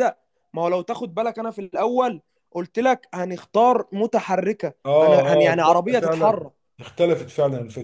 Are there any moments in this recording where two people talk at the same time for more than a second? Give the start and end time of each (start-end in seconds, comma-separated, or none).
4.8-6.5